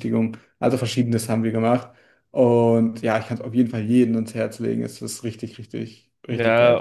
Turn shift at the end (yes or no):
yes